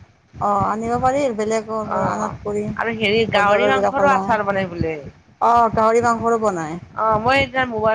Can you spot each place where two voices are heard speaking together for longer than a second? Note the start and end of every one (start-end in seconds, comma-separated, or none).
3.4-5.0